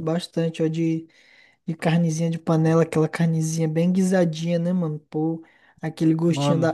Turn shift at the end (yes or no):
no